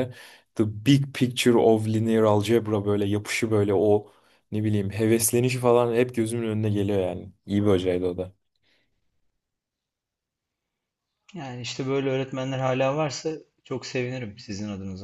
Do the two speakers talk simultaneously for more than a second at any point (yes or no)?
no